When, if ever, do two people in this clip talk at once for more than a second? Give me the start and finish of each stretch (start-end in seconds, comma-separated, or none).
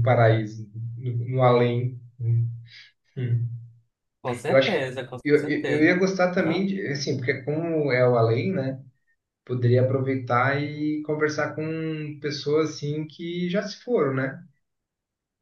4.5-6.7